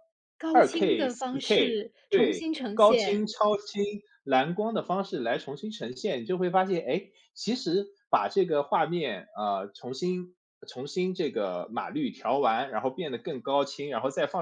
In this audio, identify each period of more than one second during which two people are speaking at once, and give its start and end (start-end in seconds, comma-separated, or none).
0.5-3.3